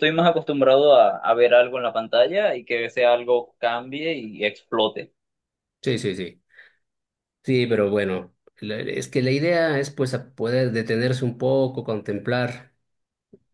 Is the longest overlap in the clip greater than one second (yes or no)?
no